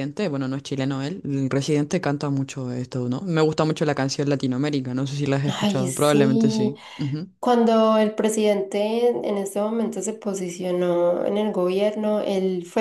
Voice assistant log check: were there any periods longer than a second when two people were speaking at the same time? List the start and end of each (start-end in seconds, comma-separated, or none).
5.5-6.7